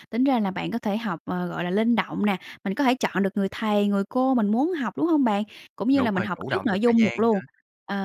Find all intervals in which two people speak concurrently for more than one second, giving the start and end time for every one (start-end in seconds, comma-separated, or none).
5.9-7.4